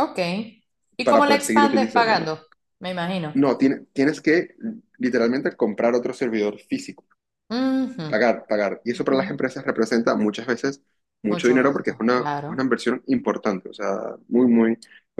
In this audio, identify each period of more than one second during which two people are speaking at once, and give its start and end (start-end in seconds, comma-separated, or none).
1.0-2.3, 11.3-12.7